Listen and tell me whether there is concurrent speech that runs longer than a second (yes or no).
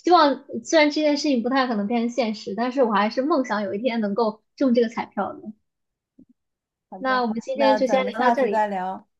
yes